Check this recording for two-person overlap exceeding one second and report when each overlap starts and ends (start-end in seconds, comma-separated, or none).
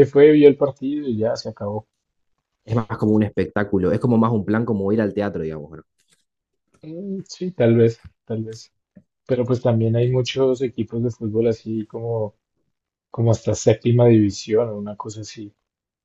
none